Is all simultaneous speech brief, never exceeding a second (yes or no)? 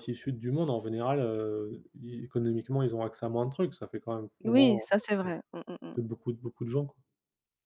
yes